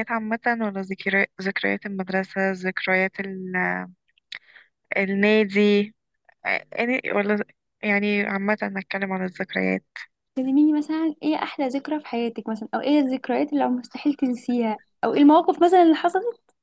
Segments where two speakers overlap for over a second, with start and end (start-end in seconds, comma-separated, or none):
none